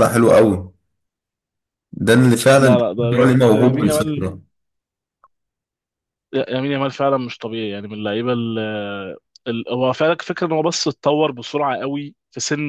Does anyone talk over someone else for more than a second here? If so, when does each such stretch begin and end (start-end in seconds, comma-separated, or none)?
2.6-4.2